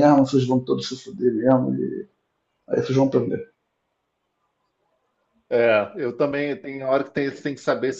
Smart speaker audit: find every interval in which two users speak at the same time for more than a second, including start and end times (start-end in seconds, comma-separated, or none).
none